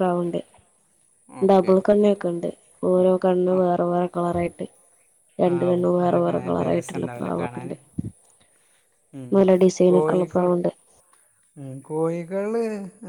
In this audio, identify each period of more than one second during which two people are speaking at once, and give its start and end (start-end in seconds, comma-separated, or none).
5.5-7.7